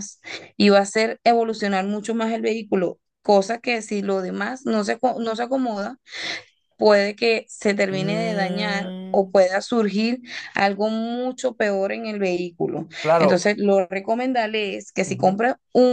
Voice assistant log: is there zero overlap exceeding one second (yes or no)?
no